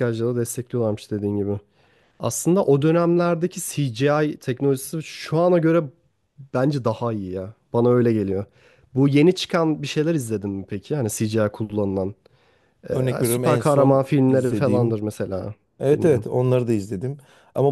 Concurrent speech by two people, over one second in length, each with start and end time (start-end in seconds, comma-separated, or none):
12.9-15.0